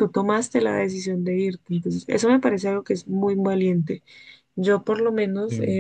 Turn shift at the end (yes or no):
no